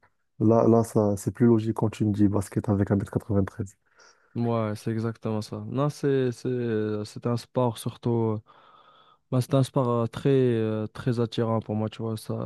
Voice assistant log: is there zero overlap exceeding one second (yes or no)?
yes